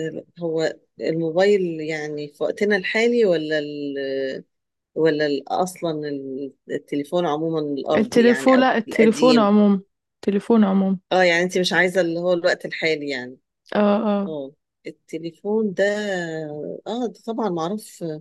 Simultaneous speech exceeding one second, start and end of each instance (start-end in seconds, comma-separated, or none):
8.0-9.5